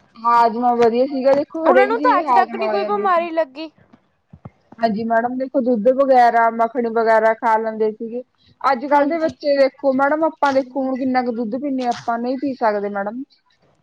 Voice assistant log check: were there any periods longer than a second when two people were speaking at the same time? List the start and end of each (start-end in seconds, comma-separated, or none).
1.7-3.2